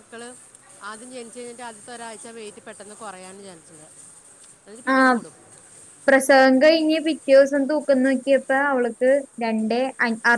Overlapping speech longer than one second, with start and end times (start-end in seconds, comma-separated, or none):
none